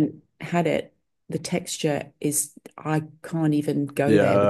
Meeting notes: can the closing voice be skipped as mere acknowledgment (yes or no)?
no